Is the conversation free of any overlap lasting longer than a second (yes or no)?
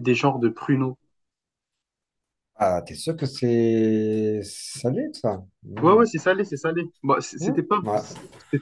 yes